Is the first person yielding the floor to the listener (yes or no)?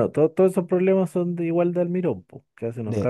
yes